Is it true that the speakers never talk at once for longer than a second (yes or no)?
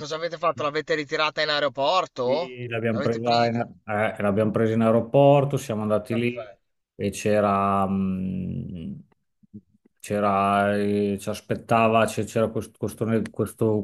no